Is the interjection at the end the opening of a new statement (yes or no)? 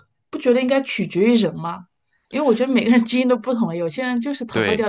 yes